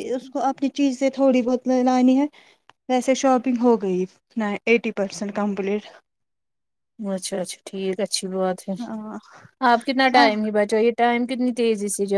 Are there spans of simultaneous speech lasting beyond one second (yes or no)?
no